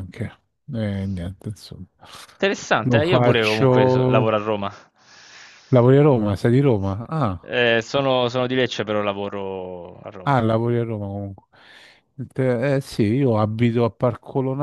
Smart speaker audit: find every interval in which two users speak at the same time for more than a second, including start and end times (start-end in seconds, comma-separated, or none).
2.8-4.4